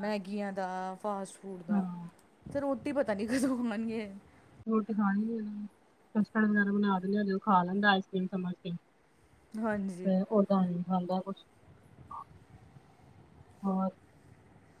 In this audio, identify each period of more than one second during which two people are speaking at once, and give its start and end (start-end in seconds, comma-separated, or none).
none